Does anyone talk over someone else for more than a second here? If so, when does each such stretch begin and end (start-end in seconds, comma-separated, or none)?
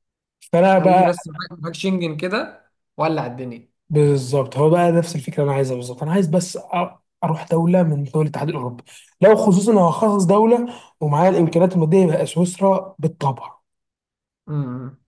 none